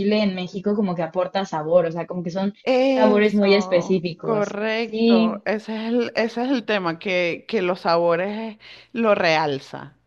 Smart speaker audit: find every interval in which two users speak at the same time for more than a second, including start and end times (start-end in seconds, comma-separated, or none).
2.9-5.4